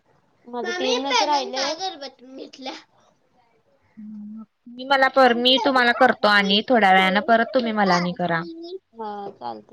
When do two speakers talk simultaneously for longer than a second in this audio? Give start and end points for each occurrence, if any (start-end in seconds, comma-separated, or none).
5.2-8.4